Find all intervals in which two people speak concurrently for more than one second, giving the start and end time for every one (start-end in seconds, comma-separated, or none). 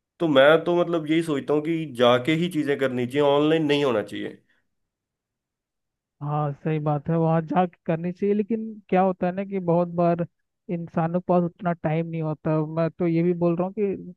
none